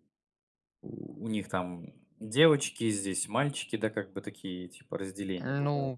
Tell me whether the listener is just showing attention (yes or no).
no